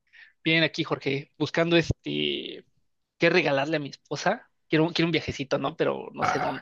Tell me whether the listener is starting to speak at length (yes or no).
yes